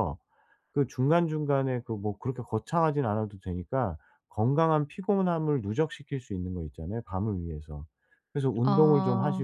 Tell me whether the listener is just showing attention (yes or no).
yes